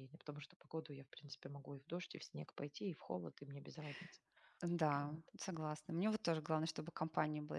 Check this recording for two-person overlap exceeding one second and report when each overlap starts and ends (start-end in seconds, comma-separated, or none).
none